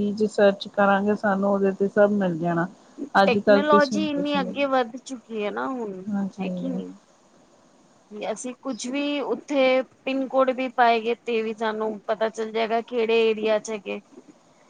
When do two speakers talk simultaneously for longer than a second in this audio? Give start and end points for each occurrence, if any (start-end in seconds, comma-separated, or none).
3.2-4.5